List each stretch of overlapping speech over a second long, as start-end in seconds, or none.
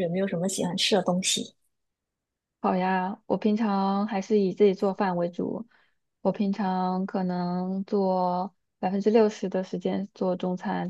none